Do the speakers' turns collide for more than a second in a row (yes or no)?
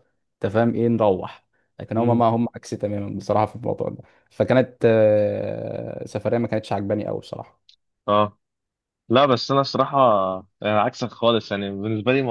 no